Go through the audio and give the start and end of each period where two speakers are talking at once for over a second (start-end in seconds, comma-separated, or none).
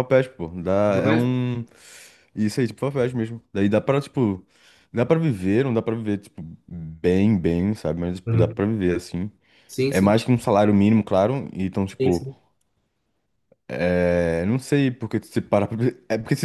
none